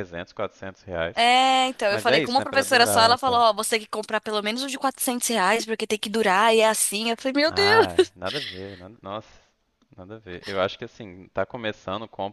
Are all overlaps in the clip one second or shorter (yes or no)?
no